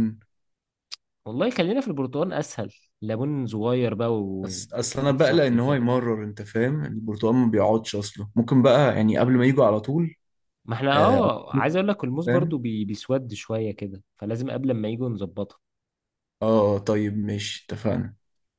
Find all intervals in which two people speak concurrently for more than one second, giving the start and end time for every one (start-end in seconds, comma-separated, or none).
4.4-5.9